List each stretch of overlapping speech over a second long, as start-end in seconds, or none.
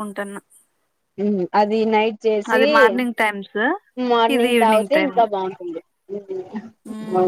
none